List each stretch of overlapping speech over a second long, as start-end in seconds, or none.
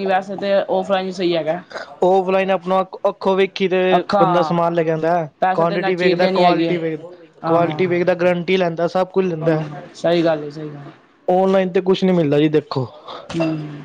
5.4-6.8